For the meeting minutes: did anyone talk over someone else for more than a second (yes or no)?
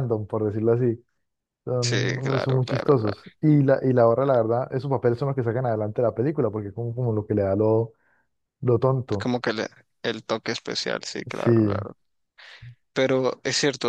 yes